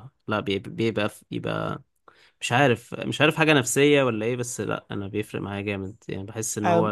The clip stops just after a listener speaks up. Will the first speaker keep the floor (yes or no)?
no